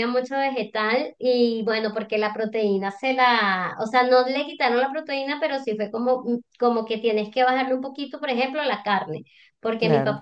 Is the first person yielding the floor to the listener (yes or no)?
no